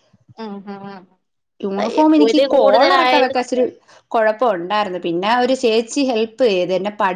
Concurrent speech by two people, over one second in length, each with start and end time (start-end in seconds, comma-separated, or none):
1.8-3.6